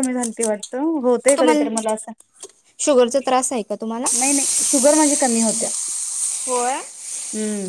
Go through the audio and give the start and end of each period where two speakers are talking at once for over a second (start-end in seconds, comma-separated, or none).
none